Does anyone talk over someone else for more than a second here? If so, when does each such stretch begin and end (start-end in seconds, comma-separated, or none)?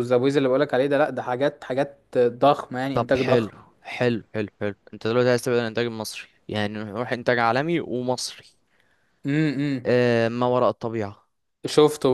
none